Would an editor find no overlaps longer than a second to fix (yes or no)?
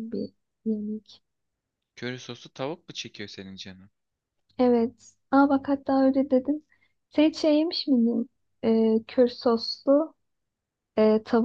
yes